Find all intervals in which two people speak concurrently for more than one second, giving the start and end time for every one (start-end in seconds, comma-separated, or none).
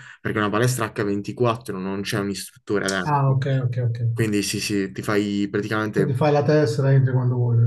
none